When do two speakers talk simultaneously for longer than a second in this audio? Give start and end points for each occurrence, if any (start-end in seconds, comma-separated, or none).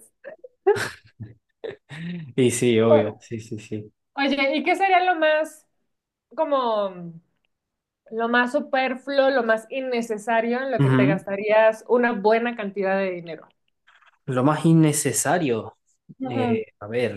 none